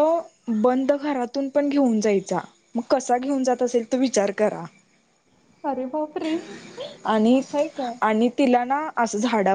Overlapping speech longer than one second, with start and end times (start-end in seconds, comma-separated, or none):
none